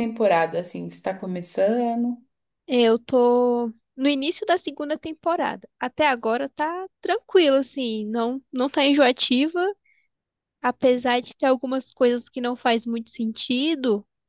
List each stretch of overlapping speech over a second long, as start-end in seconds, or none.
none